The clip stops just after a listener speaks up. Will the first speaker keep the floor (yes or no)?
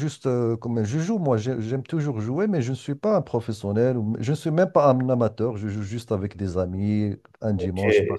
yes